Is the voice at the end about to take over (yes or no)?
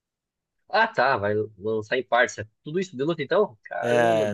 yes